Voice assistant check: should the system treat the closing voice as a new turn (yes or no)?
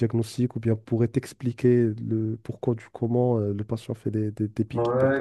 yes